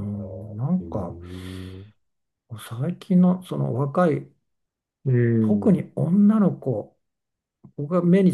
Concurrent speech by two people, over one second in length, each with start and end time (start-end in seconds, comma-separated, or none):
none